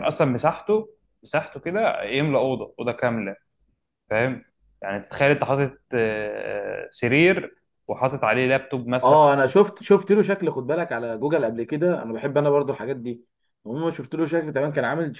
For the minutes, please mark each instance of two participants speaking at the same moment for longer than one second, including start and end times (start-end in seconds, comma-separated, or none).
none